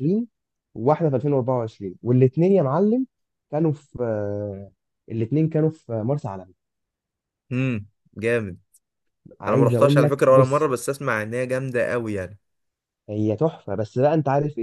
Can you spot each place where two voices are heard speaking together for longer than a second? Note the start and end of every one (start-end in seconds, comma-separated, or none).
9.5-10.7